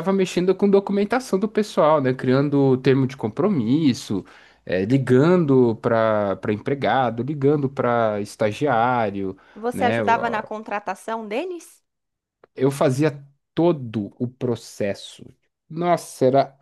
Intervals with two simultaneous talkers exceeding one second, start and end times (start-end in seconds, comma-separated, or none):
none